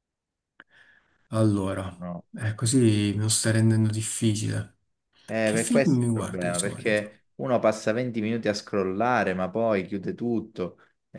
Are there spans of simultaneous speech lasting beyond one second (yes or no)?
yes